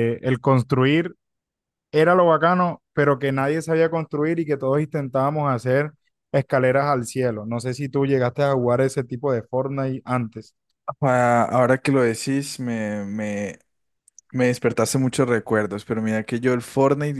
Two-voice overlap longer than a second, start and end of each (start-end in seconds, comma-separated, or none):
none